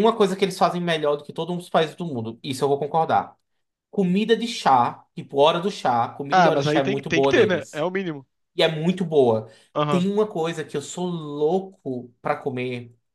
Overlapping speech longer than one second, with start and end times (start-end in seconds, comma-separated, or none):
6.3-7.9